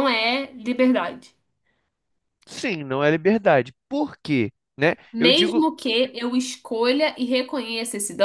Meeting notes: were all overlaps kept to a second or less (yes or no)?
yes